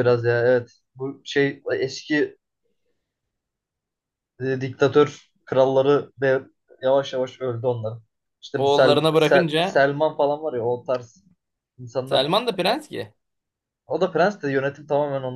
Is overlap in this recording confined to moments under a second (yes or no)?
no